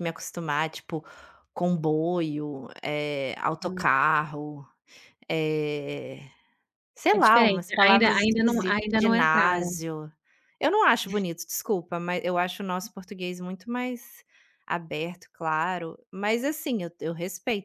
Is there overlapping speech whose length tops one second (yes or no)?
yes